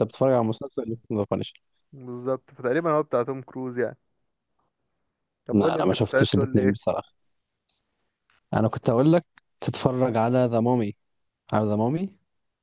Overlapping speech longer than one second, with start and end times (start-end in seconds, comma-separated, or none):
5.5-6.9